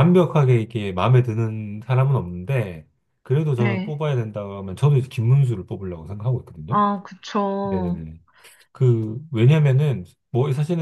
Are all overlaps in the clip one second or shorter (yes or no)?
yes